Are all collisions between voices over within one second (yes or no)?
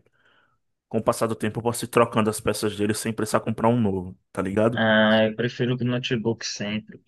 yes